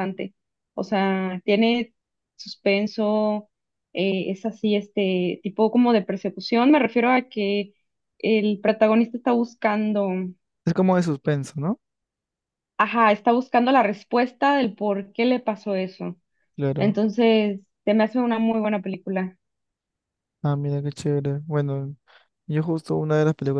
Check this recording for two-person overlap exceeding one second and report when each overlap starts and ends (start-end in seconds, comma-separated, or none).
none